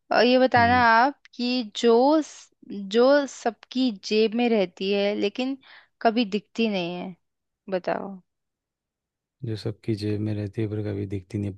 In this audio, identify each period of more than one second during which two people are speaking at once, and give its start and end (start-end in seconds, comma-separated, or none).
none